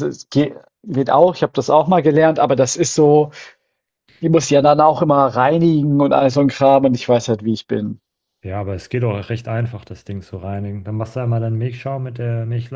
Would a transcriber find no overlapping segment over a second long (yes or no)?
yes